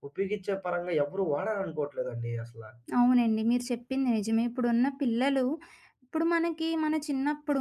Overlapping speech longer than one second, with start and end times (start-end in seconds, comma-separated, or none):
none